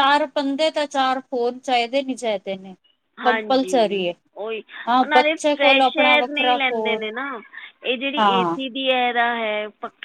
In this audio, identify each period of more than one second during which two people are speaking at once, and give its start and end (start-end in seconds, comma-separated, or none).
5.0-7.0